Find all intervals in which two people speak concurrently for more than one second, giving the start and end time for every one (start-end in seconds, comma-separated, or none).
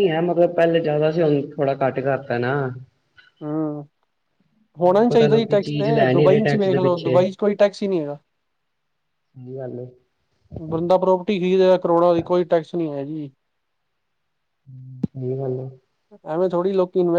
4.9-6.8